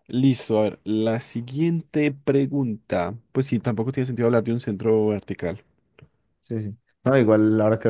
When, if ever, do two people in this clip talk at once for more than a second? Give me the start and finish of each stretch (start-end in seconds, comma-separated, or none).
none